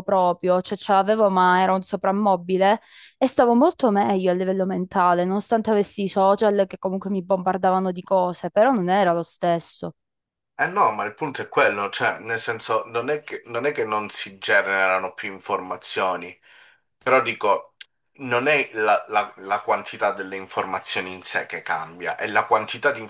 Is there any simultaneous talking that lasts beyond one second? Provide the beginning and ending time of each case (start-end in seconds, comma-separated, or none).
none